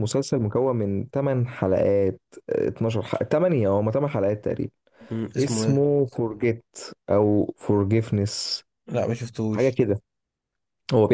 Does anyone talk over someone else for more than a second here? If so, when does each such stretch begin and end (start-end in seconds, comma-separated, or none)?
none